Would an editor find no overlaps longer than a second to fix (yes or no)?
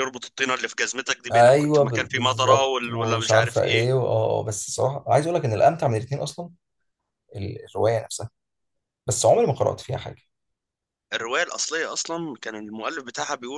no